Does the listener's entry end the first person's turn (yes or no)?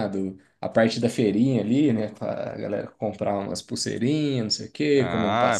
yes